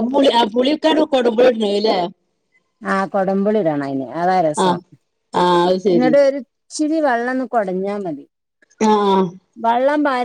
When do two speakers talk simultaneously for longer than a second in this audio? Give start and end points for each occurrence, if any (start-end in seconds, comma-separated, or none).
none